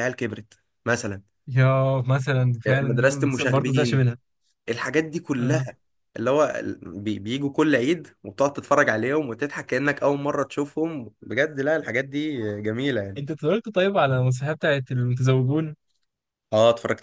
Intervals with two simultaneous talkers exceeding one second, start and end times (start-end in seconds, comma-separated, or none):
2.7-4.1